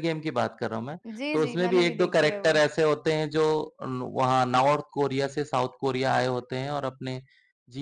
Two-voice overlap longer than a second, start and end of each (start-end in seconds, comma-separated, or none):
1.3-2.6